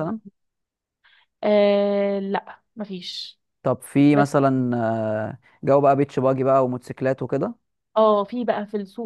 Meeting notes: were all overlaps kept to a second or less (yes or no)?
yes